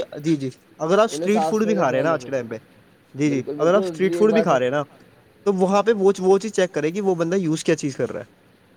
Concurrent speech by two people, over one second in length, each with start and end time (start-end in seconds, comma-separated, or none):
1.1-2.5, 3.3-4.8